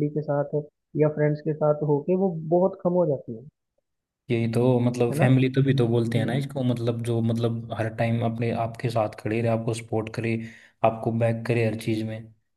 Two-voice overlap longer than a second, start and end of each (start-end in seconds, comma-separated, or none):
none